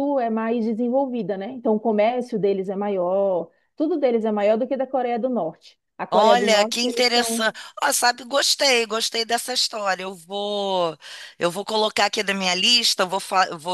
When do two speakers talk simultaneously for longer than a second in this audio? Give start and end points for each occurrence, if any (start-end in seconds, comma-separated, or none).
6.1-7.5